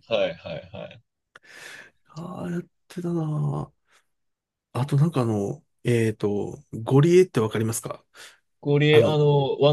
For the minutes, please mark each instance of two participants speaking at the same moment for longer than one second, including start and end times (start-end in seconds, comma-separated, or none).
none